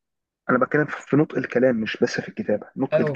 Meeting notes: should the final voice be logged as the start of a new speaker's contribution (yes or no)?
yes